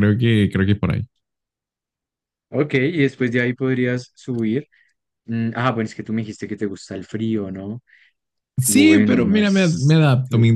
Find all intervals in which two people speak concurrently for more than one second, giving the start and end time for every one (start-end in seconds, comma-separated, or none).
8.7-10.0